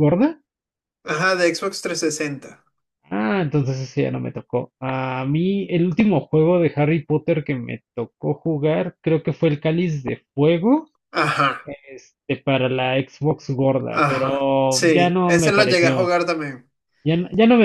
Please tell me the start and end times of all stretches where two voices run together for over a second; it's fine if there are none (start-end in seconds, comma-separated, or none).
13.9-16.1